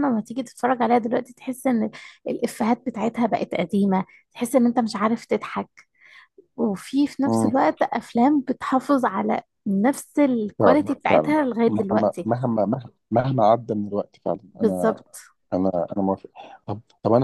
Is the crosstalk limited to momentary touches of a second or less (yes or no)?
no